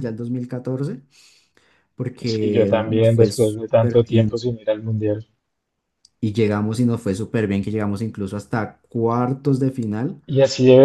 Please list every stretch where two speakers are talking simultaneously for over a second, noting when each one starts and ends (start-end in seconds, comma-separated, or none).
2.2-4.4